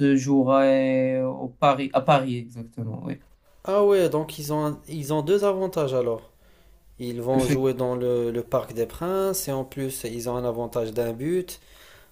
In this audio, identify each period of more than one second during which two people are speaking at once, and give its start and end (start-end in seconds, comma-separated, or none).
none